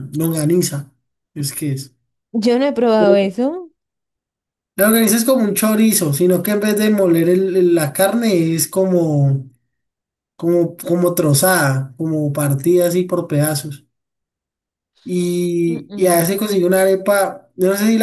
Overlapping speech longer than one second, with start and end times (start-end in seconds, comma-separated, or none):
none